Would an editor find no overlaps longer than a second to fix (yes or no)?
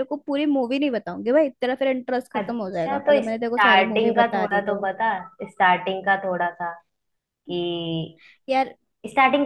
no